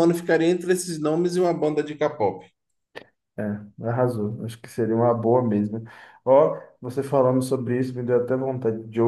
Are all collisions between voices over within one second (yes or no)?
yes